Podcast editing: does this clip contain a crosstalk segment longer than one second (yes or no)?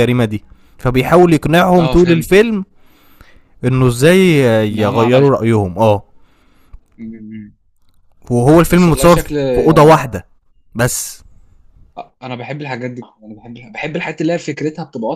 yes